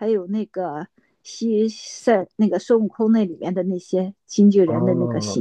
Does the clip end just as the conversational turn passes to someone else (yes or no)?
yes